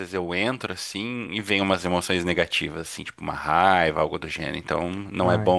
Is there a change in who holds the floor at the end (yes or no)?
no